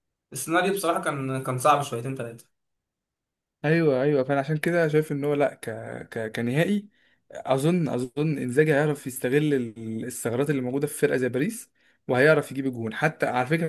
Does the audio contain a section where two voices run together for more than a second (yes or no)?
no